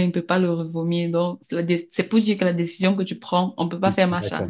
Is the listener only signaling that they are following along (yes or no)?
no